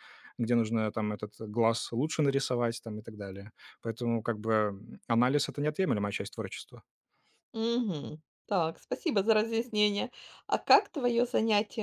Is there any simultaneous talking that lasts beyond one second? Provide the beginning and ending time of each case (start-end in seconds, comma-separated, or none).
none